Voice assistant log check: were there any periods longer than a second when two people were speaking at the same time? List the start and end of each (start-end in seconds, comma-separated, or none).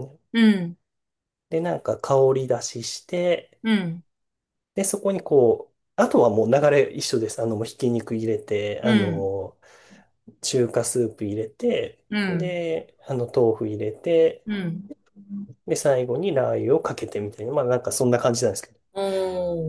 none